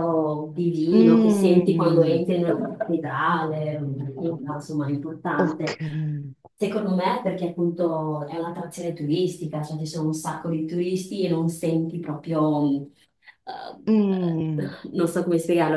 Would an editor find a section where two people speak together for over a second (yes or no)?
yes